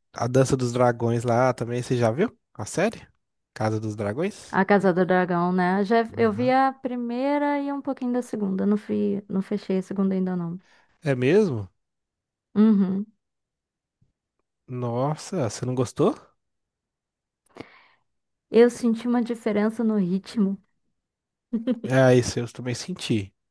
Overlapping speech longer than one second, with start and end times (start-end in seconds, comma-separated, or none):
none